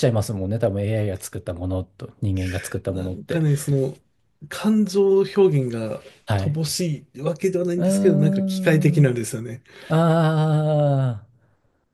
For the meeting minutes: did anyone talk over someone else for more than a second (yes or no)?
yes